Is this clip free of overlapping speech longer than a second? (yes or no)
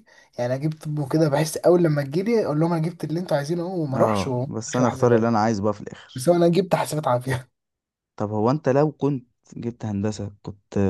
no